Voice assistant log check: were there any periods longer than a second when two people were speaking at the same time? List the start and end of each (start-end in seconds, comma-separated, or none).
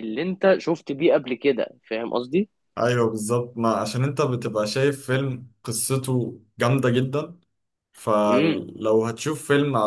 none